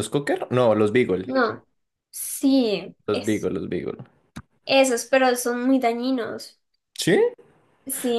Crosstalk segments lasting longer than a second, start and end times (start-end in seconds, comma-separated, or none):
none